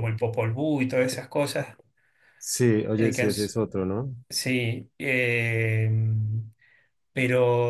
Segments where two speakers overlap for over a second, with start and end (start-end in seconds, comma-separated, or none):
none